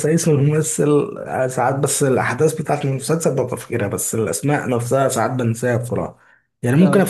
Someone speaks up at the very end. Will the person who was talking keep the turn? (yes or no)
yes